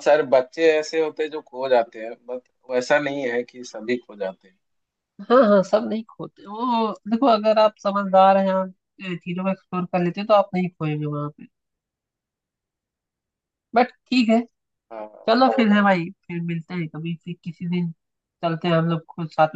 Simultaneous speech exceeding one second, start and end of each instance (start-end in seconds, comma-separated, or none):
none